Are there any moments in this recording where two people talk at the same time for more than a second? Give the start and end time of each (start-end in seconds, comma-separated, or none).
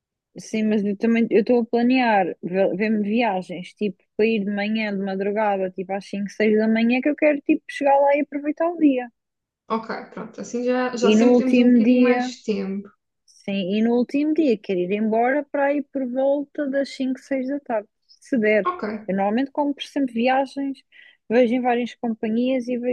11.0-12.3